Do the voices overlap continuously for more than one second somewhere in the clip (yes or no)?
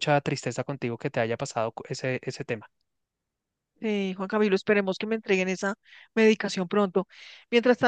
no